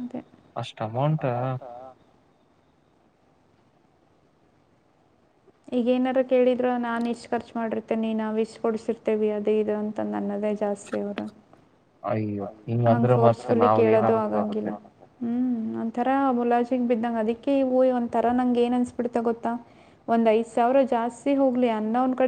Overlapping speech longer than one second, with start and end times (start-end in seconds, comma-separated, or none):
12.9-14.7